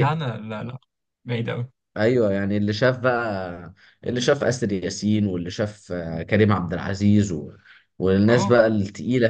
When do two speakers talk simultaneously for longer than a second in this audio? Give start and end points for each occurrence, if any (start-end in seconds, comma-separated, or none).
none